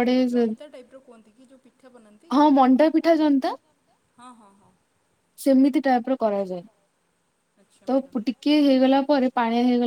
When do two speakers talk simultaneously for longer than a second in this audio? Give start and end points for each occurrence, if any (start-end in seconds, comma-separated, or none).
none